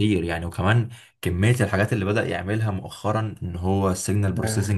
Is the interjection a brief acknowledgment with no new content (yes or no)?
yes